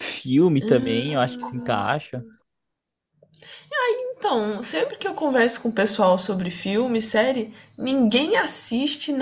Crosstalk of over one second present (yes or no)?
yes